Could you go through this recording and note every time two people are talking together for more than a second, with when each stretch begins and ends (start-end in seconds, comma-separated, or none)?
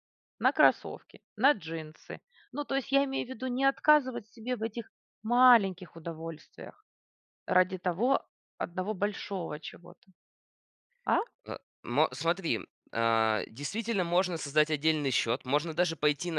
none